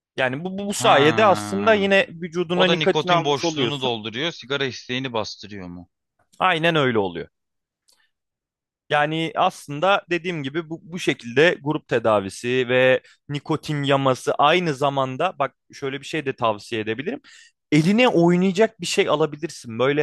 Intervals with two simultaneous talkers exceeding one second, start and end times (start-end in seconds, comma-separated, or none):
0.7-1.9, 2.5-3.9